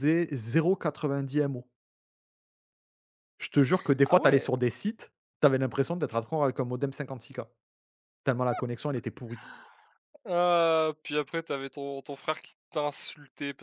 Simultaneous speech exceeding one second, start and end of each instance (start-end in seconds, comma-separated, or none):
none